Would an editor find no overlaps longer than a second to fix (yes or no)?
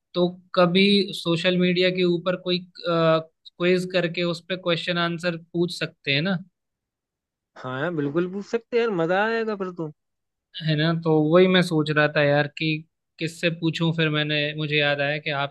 yes